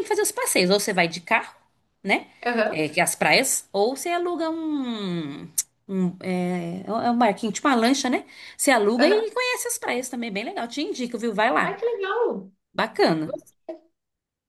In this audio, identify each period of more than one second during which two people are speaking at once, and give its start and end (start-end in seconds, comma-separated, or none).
none